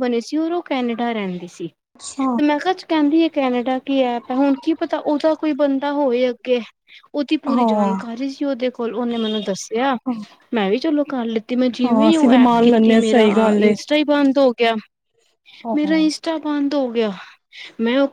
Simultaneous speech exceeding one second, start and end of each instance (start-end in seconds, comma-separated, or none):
11.8-13.8